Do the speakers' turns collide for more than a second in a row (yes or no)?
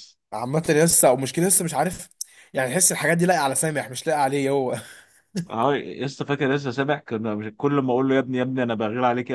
no